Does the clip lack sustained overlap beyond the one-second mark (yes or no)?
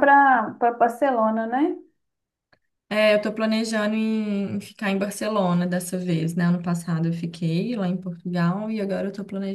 yes